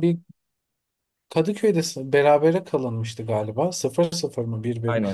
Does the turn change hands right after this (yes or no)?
yes